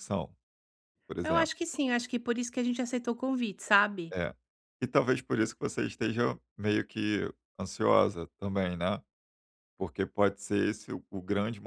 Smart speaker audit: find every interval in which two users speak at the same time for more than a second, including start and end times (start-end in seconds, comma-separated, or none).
none